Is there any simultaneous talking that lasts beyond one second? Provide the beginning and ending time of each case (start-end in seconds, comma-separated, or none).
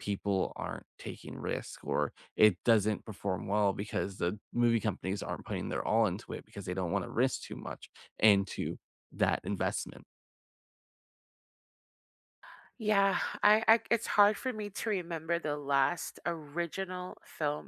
none